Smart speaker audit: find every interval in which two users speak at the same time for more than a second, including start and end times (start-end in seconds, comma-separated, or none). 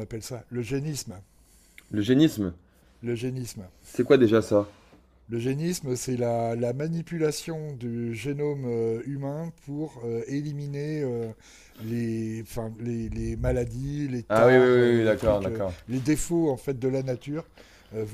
14.3-15.7